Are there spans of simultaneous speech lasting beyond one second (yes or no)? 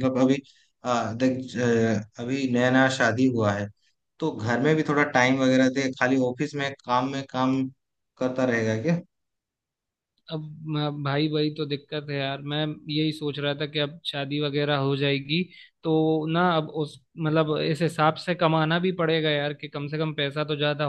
no